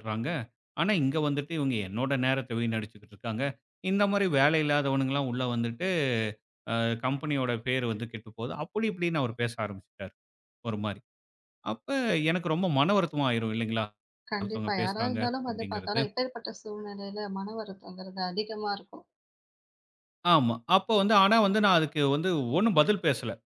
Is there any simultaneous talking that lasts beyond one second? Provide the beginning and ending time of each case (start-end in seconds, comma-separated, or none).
14.4-16.0